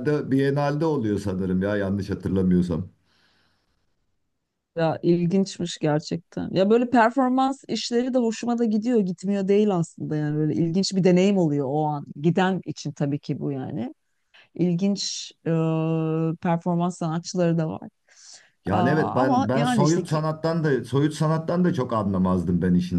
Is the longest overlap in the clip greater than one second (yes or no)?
yes